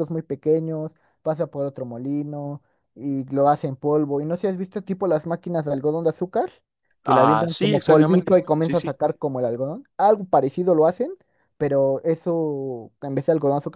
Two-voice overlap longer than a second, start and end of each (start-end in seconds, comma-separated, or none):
7.0-8.9